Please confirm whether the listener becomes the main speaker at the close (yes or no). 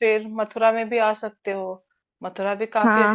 yes